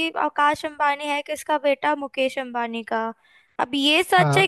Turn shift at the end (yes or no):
no